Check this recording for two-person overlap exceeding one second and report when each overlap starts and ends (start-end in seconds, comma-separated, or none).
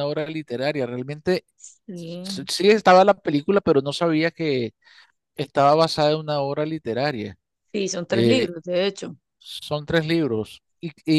none